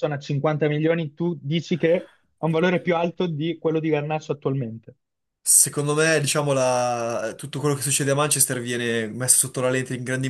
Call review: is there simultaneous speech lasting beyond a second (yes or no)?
no